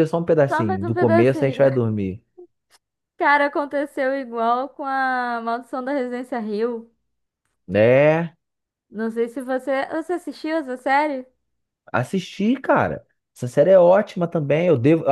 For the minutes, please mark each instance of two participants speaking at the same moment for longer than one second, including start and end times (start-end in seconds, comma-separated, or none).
0.5-1.8